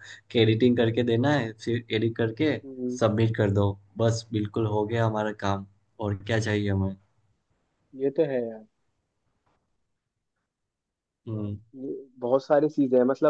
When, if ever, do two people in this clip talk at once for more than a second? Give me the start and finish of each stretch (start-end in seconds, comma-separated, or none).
none